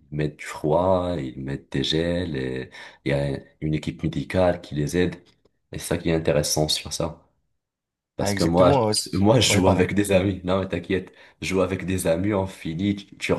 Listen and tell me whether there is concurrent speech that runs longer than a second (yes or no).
yes